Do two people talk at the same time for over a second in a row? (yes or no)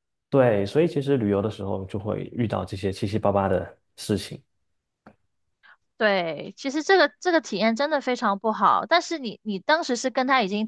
no